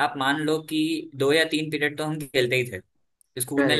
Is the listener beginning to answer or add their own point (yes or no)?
no